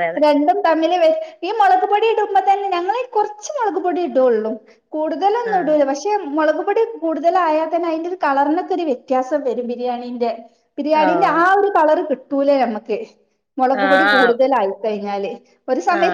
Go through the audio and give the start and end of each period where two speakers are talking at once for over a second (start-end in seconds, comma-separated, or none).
none